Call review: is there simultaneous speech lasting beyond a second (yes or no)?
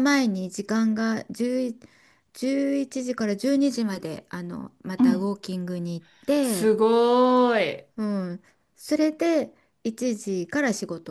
no